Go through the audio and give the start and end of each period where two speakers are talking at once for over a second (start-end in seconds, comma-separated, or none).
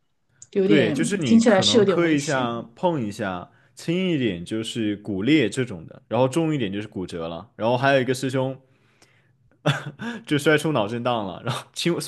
0.6-2.6